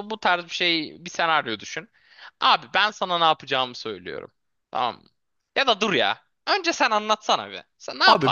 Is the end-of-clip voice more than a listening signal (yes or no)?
yes